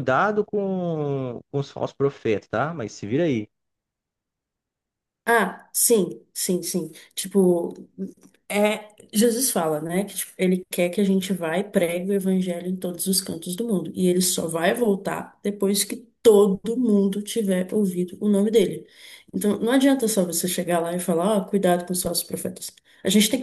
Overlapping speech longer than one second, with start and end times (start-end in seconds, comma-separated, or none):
none